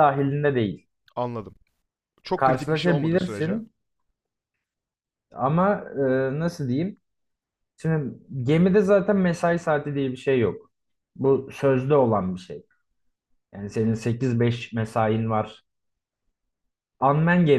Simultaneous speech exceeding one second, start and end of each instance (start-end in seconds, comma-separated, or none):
2.4-3.6